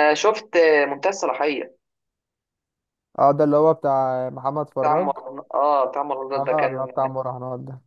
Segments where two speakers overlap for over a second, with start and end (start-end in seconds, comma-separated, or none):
none